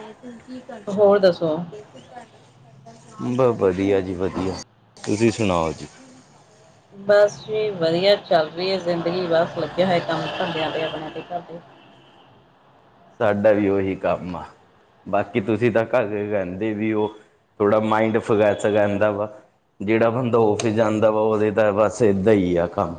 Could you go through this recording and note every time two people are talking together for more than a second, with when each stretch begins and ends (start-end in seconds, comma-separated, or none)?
none